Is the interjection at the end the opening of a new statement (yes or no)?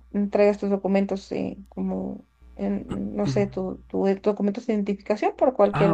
yes